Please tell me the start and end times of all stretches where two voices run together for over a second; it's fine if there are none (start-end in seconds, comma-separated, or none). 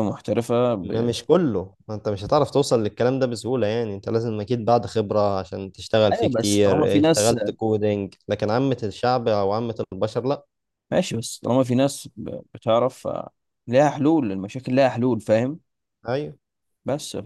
6.1-7.3